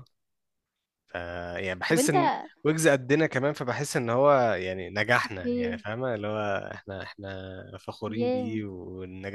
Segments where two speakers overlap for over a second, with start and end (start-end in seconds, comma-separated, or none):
none